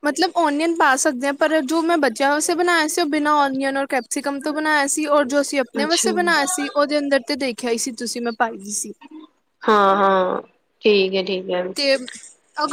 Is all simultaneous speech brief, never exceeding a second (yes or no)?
yes